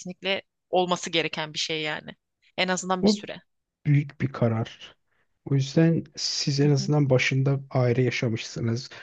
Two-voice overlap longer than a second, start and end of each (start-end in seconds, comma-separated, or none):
none